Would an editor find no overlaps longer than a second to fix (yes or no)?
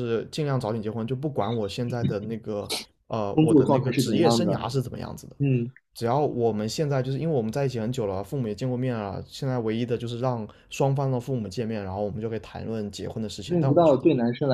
no